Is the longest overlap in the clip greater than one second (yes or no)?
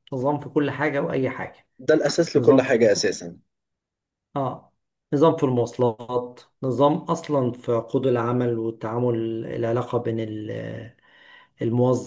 no